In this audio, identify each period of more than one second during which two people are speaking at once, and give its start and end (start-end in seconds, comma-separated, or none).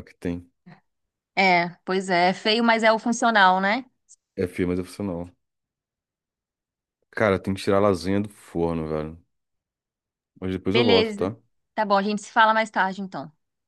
none